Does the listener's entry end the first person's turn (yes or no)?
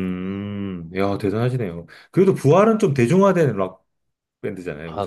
yes